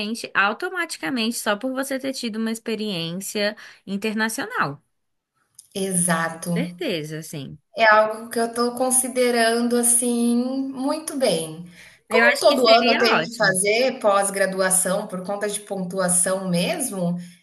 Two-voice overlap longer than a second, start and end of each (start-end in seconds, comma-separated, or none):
12.1-13.6